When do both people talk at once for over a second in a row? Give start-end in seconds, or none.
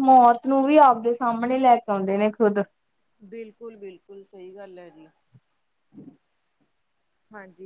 none